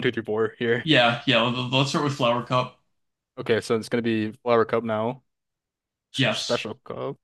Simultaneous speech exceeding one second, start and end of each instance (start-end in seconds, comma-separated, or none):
none